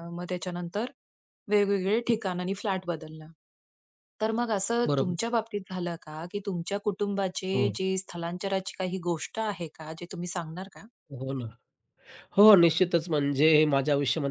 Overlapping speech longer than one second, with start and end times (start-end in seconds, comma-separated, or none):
none